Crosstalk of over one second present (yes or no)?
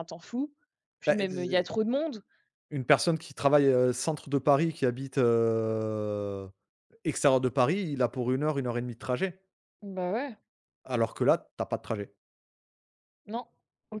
no